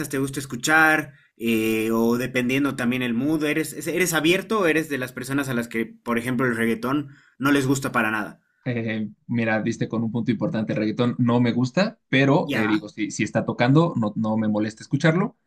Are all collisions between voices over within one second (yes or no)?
yes